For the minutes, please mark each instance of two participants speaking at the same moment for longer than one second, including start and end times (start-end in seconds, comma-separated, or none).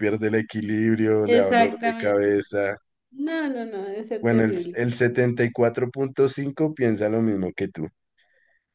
1.2-2.6